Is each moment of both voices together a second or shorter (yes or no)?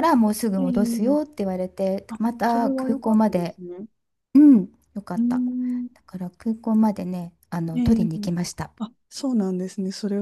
no